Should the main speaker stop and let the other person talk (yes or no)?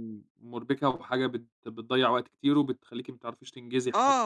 yes